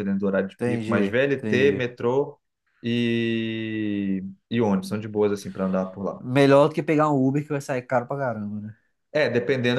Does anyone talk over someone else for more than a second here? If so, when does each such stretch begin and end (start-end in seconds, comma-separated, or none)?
0.5-1.9